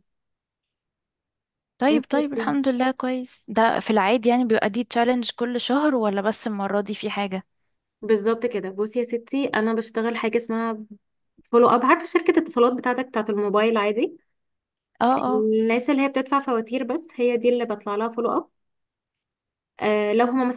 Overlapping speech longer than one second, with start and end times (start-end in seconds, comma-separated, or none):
none